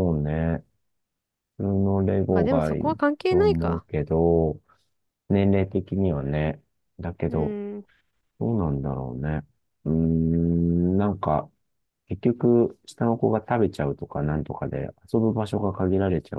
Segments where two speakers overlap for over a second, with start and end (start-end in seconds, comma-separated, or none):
2.3-3.9